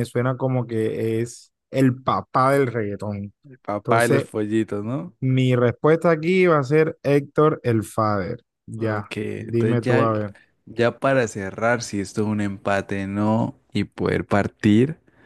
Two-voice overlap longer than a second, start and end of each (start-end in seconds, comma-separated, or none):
8.8-10.1